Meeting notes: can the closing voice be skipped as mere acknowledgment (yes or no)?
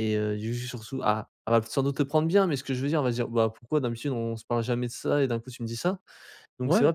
yes